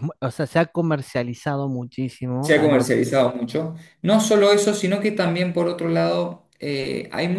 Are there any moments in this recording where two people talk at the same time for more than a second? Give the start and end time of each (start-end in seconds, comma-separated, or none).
none